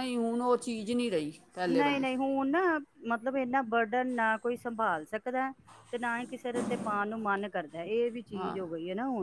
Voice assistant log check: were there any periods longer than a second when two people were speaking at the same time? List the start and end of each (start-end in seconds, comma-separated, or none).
none